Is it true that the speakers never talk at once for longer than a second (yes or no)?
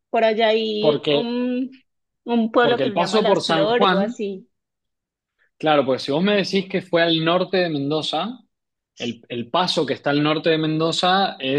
no